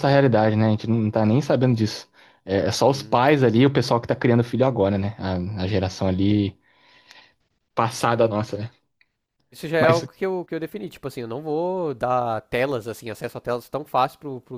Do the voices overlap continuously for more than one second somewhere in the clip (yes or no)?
no